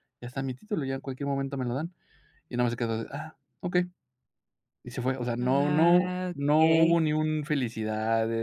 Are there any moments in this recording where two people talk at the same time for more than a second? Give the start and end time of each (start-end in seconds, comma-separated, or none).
5.4-7.0